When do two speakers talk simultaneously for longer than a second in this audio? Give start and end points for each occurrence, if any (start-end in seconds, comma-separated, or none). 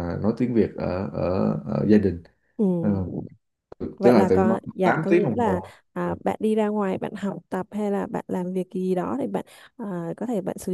4.0-6.1